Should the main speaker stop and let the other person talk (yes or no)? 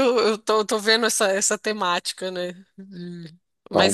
no